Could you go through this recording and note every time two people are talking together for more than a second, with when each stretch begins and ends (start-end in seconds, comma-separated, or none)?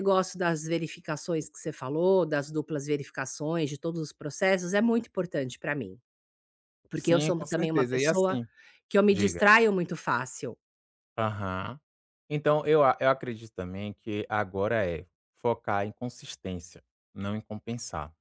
6.9-8.4